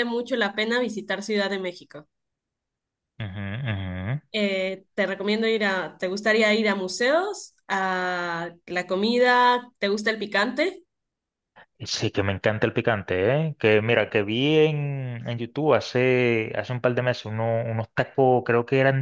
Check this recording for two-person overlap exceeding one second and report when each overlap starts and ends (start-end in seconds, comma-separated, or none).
none